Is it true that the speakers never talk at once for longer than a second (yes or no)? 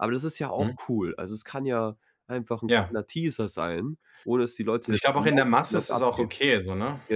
no